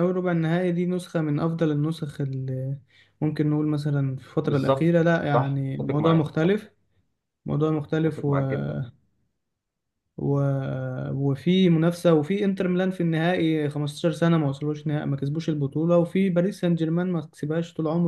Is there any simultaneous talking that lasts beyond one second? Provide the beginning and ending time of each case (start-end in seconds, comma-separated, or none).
4.4-6.3